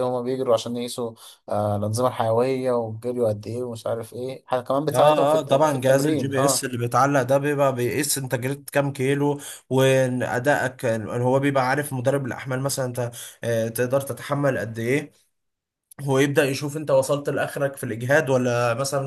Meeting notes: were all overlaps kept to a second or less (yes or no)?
no